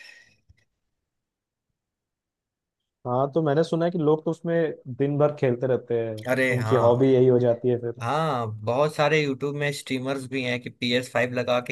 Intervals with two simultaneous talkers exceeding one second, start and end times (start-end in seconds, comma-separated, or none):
none